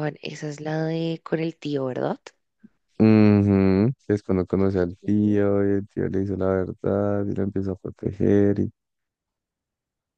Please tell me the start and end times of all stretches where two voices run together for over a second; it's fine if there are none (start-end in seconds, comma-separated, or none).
none